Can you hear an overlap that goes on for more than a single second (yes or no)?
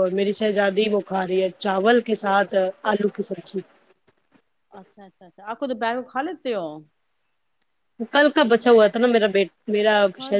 no